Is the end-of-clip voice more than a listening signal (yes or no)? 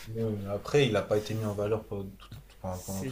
yes